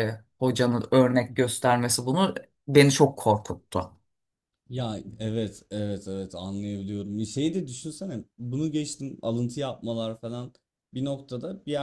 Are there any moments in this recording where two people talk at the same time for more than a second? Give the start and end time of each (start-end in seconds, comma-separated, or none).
none